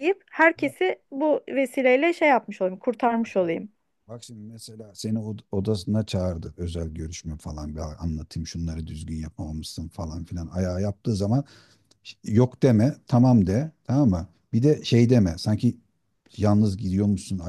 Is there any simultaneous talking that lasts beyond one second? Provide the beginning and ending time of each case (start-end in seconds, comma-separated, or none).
none